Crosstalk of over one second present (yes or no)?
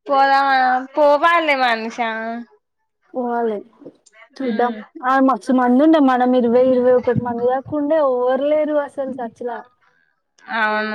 no